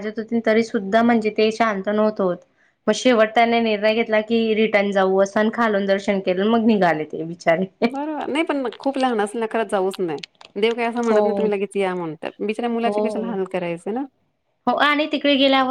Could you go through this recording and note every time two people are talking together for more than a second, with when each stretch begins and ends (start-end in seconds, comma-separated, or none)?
none